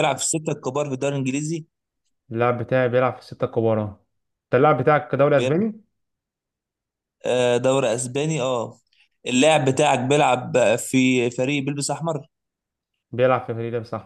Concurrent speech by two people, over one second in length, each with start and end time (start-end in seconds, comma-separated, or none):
none